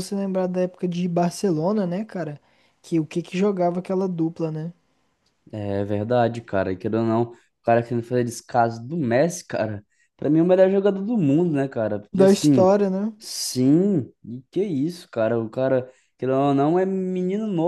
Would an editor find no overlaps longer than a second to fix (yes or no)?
yes